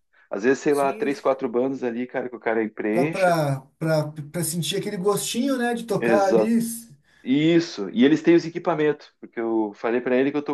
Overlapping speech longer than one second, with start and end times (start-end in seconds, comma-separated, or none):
none